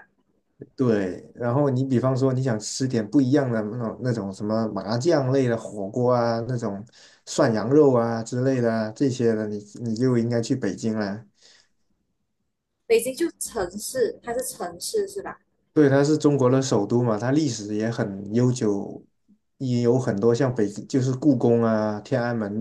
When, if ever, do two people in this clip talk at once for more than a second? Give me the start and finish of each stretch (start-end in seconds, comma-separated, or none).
none